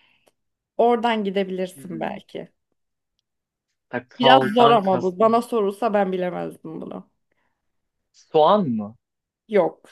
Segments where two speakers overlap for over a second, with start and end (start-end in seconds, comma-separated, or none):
4.2-5.4